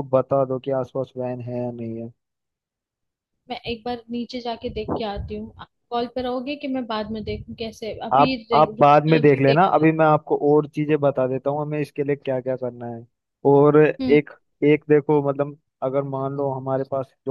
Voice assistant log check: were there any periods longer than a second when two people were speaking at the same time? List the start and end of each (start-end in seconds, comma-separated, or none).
8.1-9.6